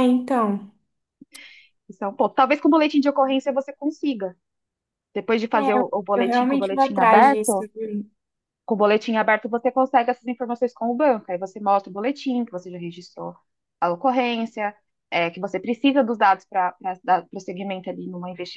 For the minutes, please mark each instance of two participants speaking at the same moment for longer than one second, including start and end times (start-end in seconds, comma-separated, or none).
5.5-7.7